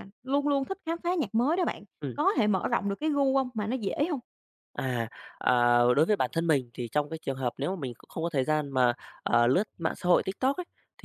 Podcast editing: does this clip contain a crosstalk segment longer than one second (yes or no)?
no